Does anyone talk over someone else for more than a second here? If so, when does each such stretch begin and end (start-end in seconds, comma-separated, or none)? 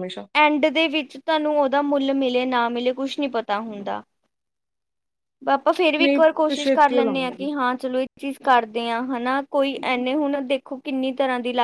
6.0-7.5